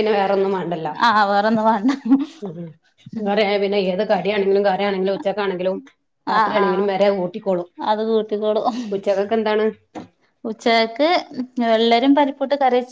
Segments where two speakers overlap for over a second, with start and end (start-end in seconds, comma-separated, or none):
none